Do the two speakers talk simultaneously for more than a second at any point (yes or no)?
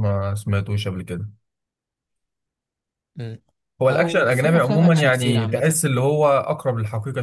yes